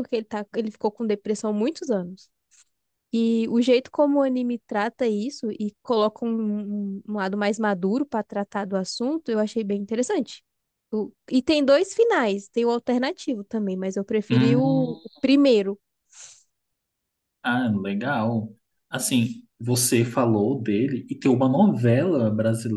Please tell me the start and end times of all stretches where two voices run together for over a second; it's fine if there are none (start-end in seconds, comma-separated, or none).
none